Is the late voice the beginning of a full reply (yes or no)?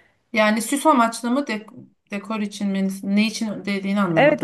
yes